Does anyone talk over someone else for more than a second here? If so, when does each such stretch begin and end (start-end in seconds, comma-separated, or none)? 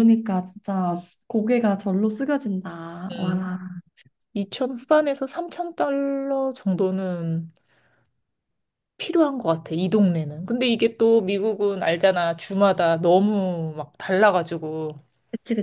none